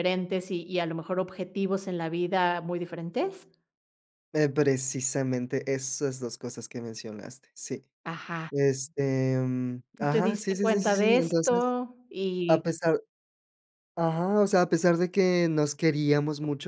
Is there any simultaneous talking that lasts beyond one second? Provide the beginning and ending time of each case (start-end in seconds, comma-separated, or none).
10.0-11.8